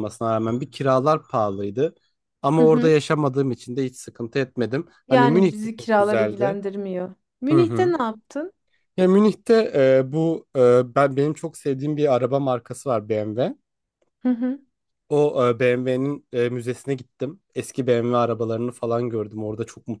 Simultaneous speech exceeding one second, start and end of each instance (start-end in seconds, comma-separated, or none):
5.1-6.6